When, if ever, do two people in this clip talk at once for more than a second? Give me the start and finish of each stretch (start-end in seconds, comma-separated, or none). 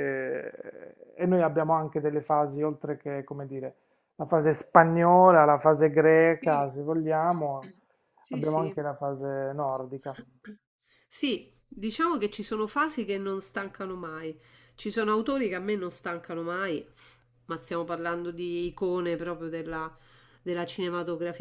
none